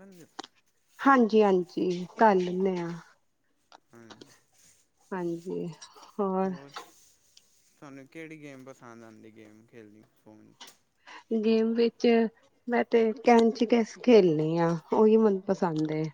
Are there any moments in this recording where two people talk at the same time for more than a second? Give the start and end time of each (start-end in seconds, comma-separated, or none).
none